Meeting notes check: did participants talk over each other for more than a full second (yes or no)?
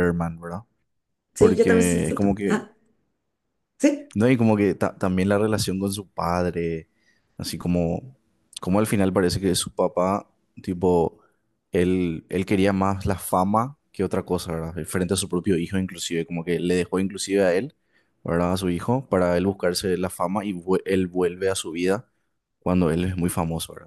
yes